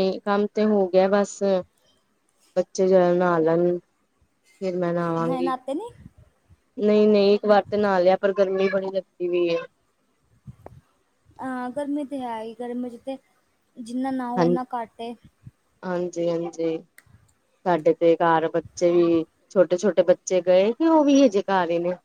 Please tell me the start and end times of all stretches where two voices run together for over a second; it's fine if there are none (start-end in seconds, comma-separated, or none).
none